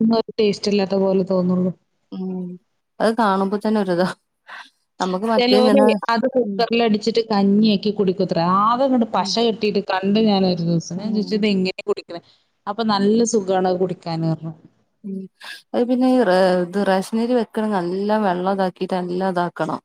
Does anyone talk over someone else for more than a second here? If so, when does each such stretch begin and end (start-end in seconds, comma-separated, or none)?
none